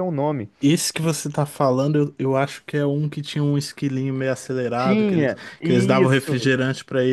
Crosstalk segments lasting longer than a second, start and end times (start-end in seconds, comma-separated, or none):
4.8-6.5